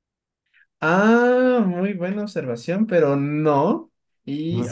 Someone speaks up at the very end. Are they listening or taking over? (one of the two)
listening